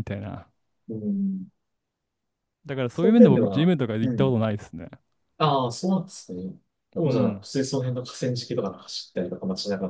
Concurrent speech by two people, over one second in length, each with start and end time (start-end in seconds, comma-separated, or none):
2.9-4.4